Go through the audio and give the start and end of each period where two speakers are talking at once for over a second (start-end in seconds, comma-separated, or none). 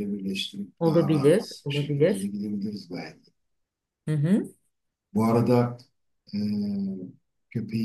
0.8-2.3